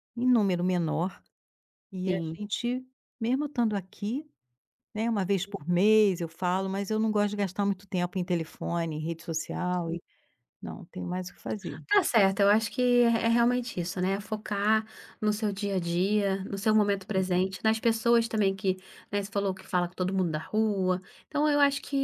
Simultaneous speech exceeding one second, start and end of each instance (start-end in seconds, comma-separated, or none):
none